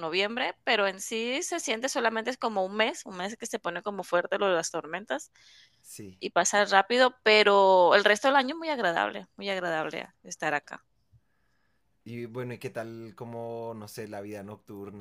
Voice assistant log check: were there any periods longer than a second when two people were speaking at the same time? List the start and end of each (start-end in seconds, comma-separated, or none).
none